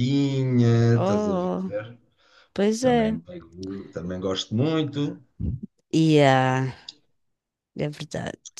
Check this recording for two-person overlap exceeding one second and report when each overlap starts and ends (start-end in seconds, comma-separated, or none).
none